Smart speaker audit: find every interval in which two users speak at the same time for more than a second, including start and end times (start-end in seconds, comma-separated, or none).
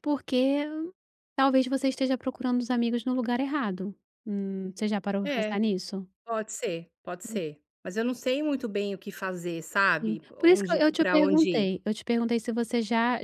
10.0-11.7